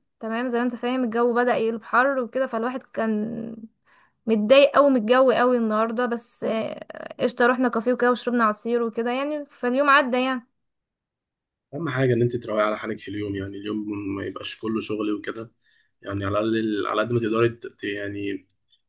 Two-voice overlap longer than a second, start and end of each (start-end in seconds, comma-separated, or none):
none